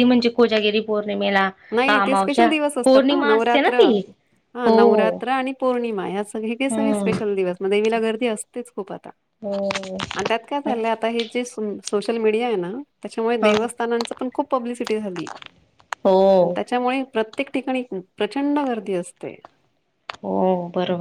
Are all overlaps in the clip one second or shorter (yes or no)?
no